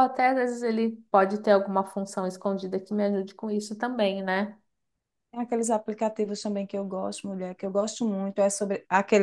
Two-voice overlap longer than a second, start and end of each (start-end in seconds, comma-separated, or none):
none